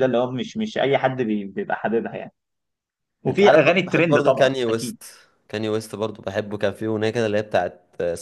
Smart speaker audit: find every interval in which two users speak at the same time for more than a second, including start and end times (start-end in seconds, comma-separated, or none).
3.3-5.0